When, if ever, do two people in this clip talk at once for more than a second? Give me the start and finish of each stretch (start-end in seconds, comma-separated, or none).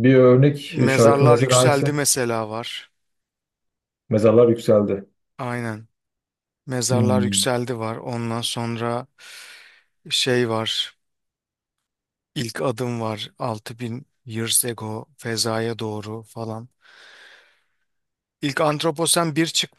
0.7-2.0